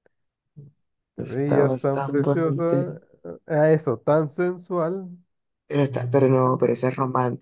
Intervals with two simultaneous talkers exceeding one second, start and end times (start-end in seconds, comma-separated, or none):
1.1-2.8